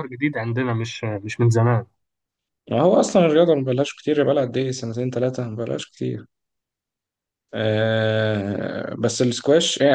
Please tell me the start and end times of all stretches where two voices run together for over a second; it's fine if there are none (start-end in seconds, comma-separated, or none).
none